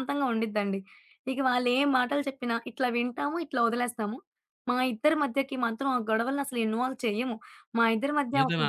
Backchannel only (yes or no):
yes